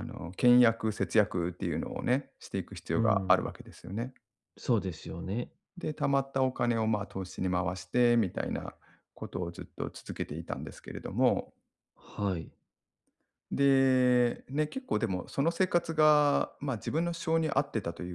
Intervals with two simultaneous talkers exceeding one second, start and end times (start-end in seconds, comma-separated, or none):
none